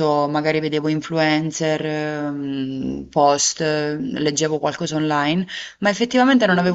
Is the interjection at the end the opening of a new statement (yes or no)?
no